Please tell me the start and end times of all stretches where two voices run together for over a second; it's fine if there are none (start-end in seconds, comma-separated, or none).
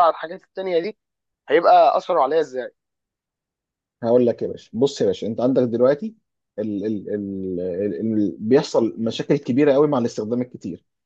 none